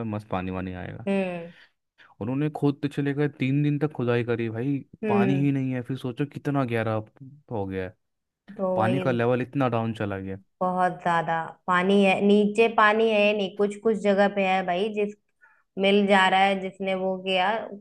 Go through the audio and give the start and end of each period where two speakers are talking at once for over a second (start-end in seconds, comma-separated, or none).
none